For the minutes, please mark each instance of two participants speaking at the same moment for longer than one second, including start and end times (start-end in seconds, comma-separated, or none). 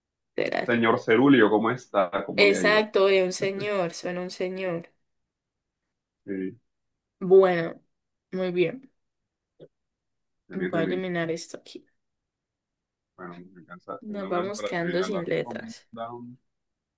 14.0-15.9